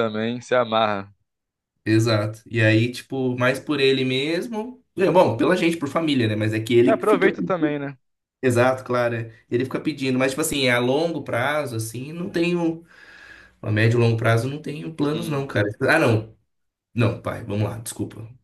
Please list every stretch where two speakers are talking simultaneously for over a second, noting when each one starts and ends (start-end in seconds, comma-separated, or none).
none